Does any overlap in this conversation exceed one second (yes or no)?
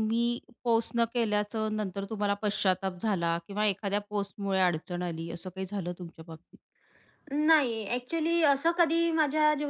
no